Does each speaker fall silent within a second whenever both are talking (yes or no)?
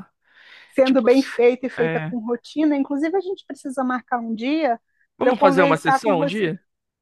no